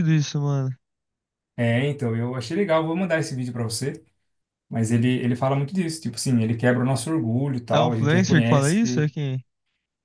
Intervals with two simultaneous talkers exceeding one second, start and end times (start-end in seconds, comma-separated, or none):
7.7-9.1